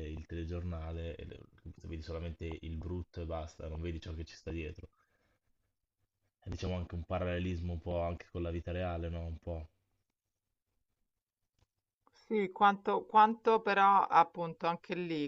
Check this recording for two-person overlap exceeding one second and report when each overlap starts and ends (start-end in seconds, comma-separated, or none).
none